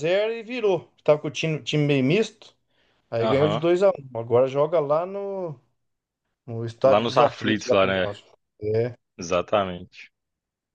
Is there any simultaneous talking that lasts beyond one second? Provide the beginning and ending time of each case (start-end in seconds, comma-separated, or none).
6.8-8.1